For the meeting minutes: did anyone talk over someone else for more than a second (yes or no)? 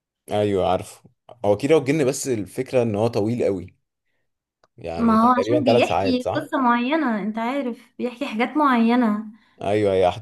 yes